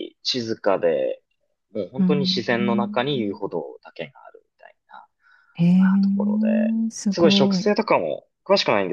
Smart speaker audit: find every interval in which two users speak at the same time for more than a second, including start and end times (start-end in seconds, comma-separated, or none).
2.0-3.4